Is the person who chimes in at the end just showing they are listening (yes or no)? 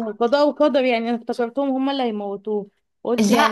yes